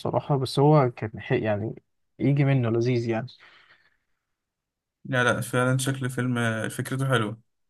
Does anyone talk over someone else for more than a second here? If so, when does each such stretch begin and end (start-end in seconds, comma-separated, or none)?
none